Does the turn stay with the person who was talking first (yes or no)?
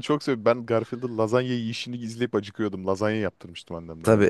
no